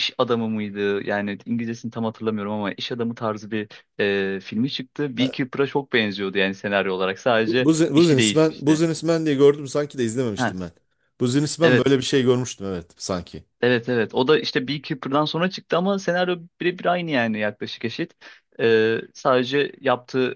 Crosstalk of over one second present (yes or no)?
yes